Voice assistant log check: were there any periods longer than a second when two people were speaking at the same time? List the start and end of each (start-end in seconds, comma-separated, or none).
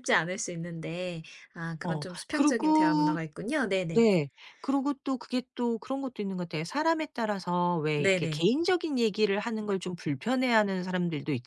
1.8-3.2